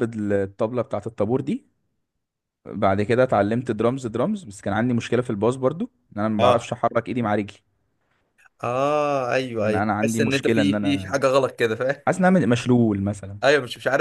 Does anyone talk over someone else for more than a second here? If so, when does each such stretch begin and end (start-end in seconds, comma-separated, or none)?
9.6-11.2